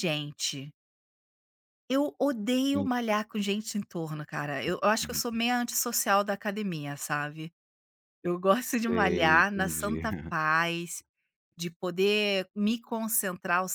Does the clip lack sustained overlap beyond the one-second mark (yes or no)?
no